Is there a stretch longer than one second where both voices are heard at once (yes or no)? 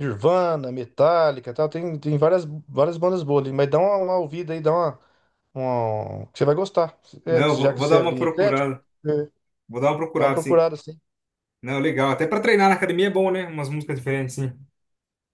yes